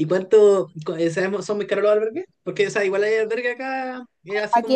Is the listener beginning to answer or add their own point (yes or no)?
yes